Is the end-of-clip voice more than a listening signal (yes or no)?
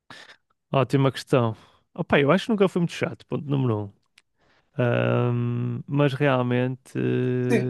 yes